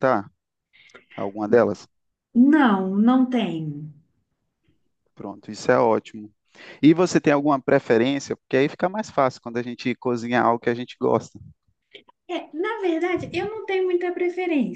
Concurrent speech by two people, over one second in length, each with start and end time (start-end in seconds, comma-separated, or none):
none